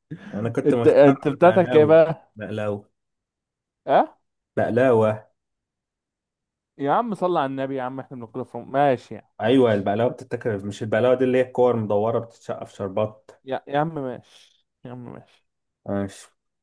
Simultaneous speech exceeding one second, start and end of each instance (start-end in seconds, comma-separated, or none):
0.6-2.0